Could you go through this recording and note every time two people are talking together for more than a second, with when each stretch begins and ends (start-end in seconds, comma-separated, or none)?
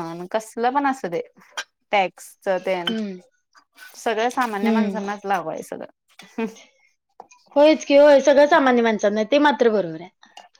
none